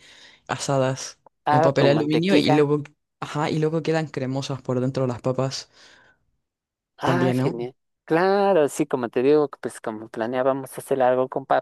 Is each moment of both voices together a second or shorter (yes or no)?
no